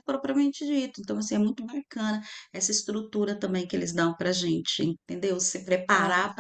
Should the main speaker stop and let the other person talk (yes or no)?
no